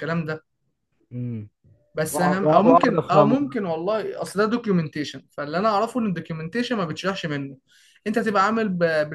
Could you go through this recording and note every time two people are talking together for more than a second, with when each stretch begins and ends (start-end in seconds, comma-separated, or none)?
2.1-3.6